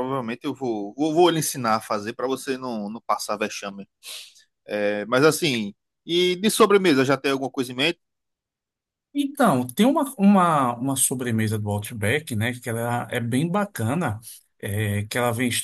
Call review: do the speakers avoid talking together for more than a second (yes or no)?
yes